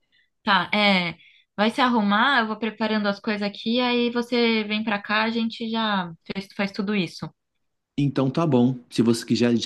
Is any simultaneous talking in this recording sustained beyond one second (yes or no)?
no